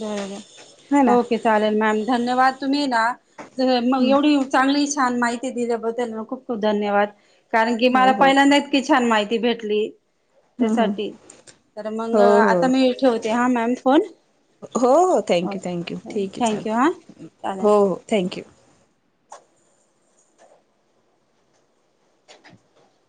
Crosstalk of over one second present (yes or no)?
yes